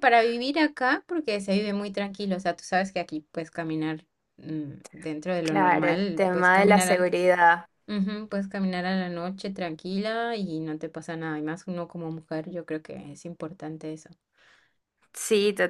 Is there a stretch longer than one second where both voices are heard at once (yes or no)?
yes